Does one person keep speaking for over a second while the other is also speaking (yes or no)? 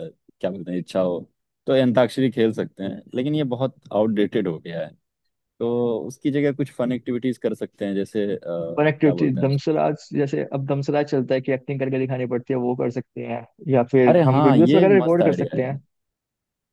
yes